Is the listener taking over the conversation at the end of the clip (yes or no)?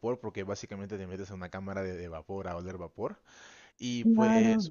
no